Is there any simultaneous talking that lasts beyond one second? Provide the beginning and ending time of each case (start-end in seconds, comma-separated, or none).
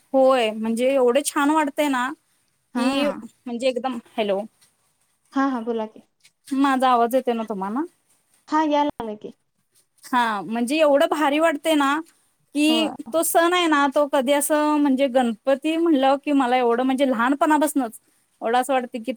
none